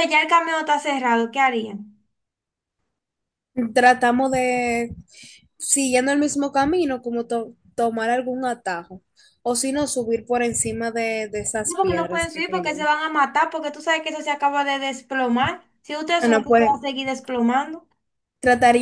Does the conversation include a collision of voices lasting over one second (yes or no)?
yes